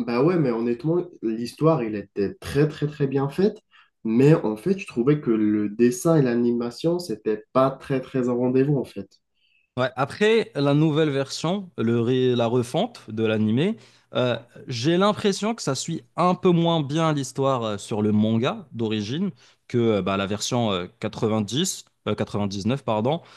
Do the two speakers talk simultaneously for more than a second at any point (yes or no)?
no